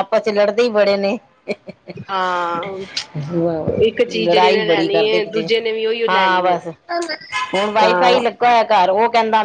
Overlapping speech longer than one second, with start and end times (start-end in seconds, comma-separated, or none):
4.1-5.5